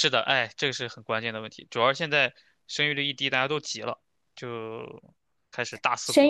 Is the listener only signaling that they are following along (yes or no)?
no